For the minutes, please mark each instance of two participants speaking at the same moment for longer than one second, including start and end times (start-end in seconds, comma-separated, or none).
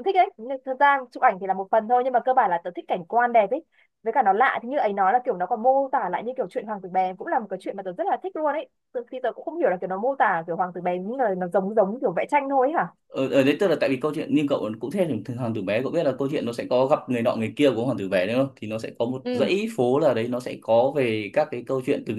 none